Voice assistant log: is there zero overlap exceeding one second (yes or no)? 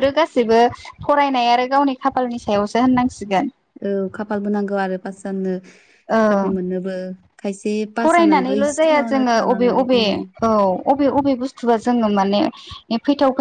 no